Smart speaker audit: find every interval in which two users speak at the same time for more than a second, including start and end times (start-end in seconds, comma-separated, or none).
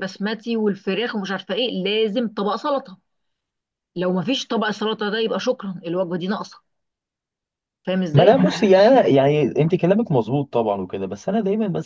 none